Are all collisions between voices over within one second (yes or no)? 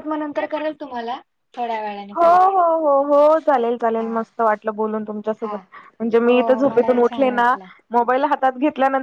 no